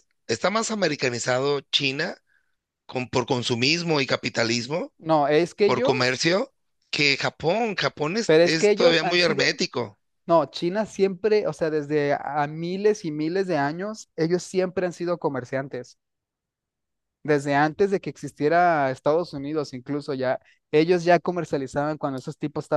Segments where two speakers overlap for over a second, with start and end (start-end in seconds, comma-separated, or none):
8.2-9.6